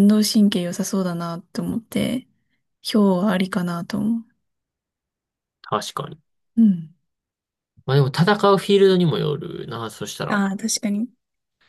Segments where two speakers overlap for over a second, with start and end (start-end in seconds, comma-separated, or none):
none